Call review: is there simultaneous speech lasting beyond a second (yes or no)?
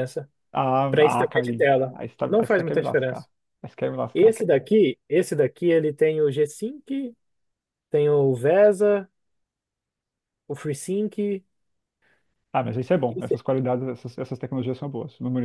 yes